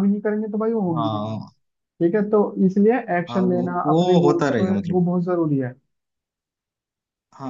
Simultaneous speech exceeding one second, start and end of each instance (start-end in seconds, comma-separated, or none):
3.3-5.0